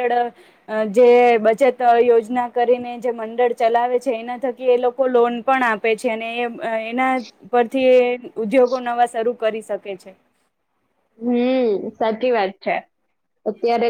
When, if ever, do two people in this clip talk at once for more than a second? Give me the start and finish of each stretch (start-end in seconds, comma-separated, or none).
none